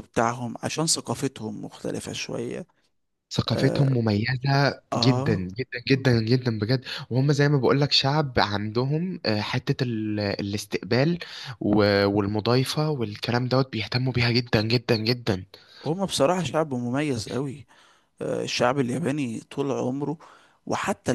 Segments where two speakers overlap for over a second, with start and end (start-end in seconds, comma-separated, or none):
none